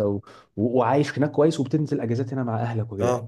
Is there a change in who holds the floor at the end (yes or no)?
no